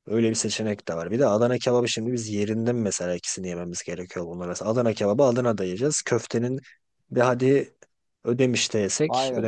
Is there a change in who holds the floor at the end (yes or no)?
yes